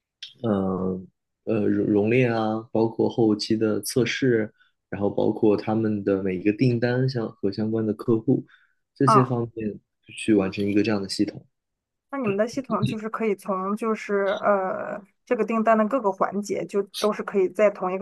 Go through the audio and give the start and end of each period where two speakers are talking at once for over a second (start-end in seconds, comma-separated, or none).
none